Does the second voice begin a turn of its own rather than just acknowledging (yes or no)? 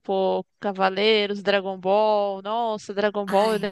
no